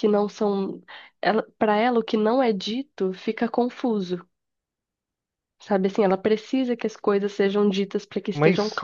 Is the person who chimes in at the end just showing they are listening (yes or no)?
no